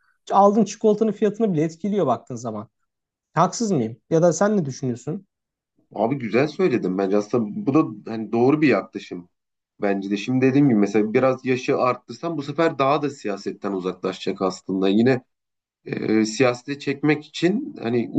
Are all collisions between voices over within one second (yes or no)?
yes